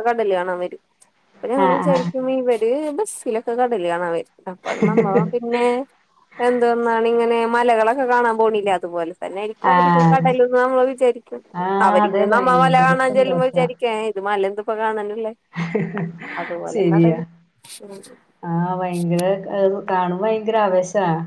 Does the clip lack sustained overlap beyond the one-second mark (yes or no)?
no